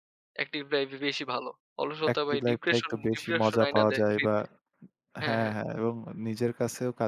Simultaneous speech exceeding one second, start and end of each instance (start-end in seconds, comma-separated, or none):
2.1-4.4